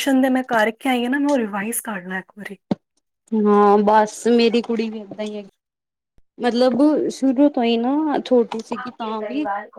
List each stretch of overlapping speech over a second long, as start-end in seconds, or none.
none